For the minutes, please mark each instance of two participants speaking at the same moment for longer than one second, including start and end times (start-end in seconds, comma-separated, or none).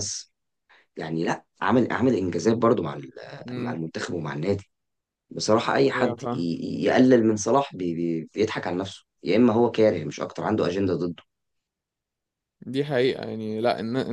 none